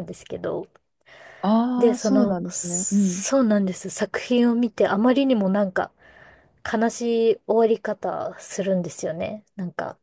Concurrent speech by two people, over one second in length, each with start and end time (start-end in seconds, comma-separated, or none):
1.8-3.2